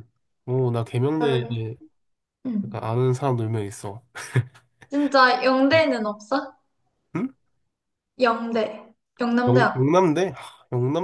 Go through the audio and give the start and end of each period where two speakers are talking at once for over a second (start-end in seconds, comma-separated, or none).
none